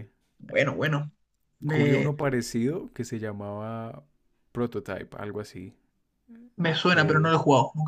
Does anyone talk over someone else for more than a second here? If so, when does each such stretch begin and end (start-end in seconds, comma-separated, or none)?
none